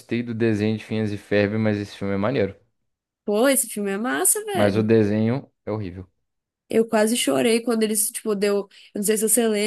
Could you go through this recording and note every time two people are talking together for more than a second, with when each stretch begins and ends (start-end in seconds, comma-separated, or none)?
none